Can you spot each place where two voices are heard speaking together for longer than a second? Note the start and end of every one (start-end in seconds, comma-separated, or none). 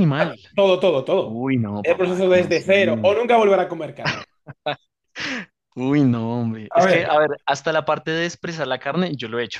1.2-2.7